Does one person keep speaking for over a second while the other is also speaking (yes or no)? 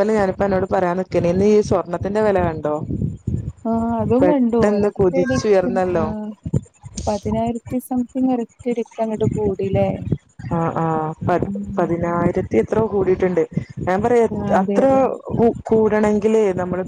yes